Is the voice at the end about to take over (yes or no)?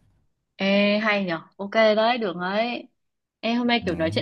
no